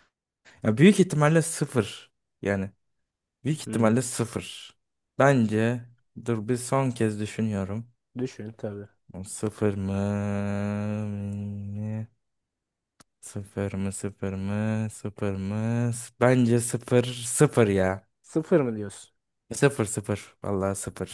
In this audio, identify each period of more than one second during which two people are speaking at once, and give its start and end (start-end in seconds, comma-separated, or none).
none